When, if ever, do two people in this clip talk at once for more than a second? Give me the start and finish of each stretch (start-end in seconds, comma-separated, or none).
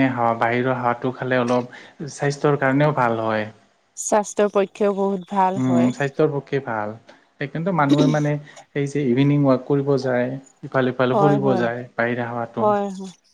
none